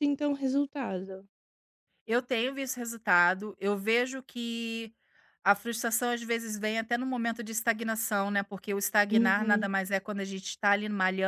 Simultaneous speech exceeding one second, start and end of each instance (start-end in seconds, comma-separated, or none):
none